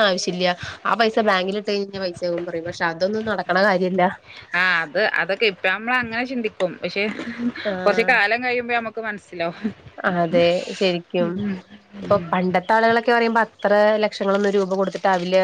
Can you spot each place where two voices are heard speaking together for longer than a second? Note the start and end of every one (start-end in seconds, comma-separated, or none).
none